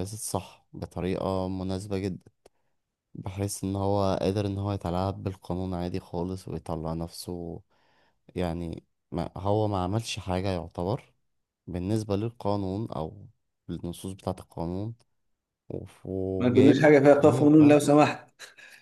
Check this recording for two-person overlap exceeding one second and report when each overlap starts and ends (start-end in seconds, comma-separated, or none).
16.4-18.0